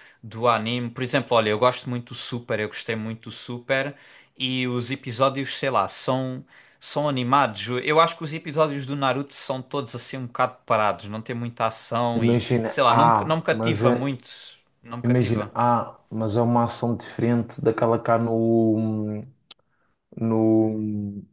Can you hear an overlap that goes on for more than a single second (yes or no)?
yes